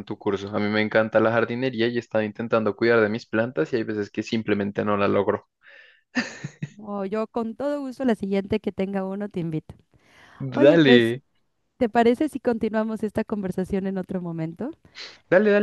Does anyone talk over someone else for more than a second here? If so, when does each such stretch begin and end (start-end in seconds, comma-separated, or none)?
none